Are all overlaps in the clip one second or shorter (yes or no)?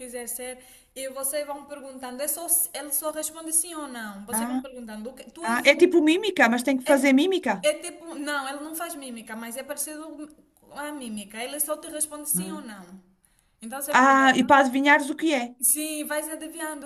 yes